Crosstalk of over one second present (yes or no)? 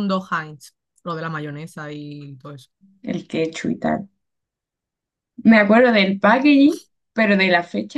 no